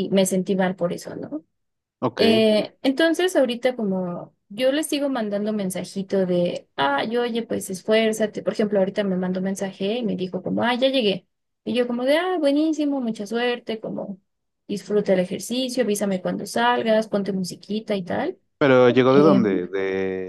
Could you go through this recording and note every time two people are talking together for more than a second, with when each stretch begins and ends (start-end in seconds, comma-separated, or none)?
none